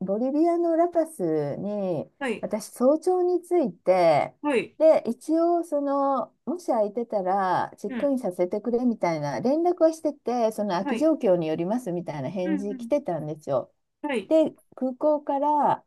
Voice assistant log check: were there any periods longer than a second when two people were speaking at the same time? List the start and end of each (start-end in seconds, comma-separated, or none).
none